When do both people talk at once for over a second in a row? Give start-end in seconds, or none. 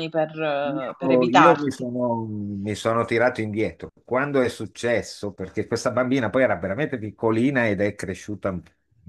0.6-1.9